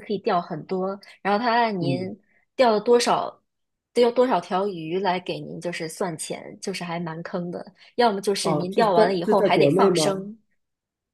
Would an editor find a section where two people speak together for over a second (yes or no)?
yes